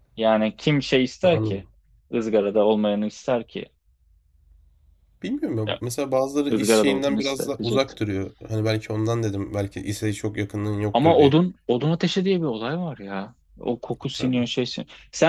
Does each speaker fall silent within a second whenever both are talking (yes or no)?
no